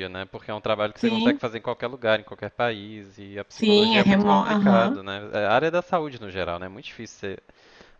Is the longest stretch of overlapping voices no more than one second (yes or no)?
no